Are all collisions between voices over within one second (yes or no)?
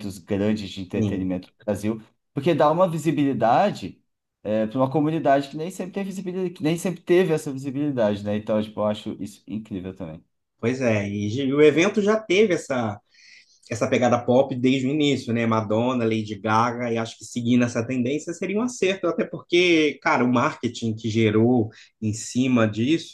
yes